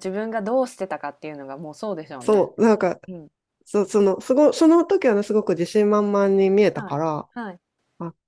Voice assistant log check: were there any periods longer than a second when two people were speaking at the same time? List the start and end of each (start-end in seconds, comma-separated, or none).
none